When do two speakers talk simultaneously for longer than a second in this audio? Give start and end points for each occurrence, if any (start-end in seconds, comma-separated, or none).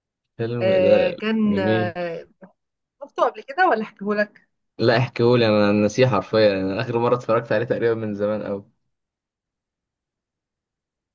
0.6-1.9